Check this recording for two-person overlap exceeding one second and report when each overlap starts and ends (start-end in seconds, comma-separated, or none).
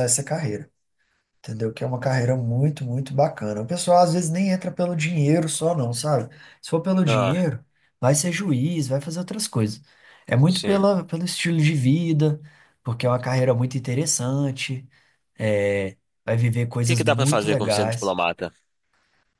16.8-18.2